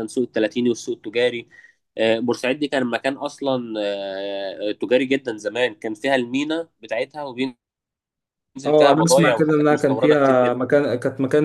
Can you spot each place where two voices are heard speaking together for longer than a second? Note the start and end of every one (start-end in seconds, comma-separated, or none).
8.8-10.7